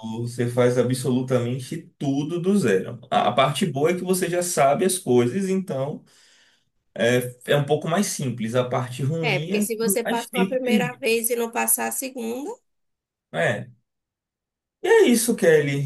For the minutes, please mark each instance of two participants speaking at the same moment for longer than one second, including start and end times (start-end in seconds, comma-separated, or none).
9.2-11.1